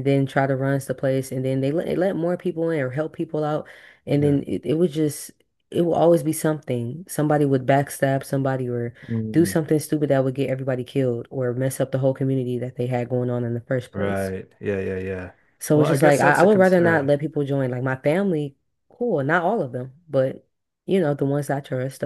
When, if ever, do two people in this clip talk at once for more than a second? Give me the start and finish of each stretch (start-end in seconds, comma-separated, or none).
15.7-17.1